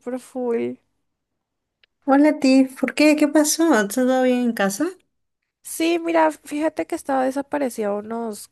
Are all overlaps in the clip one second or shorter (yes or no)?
yes